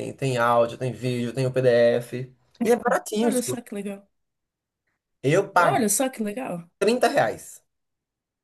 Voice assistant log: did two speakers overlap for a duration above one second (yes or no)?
no